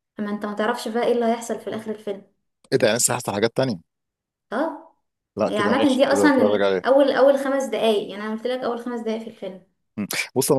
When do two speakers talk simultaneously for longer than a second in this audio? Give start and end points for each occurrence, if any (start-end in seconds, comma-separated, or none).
5.5-7.0